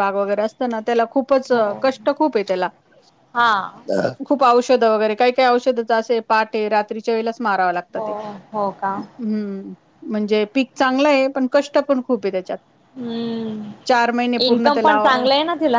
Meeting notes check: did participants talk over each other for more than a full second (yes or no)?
no